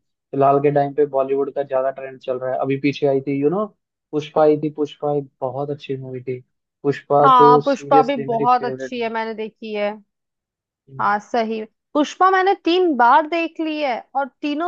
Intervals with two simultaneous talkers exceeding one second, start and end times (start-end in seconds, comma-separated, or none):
7.2-8.9